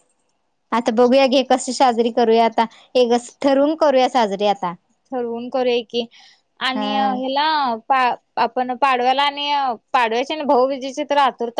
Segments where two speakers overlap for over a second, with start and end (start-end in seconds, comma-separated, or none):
none